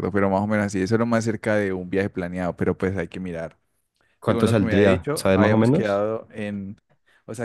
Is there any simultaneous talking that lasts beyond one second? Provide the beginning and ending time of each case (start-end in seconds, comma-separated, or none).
4.2-6.1